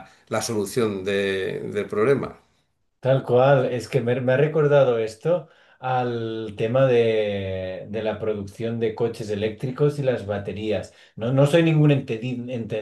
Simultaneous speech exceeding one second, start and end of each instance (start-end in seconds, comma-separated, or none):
none